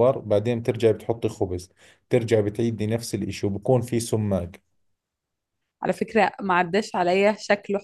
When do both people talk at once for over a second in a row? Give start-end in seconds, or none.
none